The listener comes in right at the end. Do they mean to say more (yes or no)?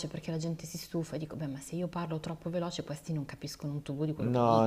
yes